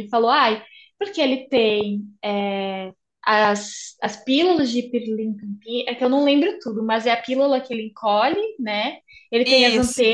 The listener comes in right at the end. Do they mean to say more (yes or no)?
no